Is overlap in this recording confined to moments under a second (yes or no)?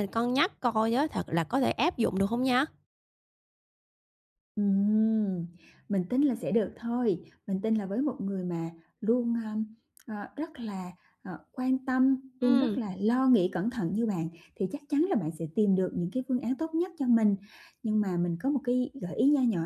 yes